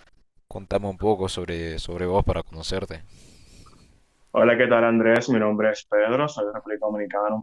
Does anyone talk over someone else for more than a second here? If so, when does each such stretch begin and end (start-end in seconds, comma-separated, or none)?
none